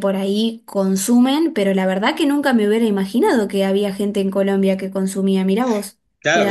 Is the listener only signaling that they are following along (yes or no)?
no